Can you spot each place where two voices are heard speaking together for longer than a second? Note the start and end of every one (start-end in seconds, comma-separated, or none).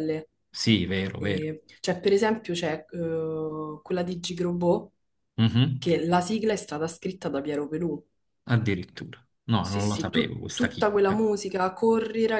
9.6-11.2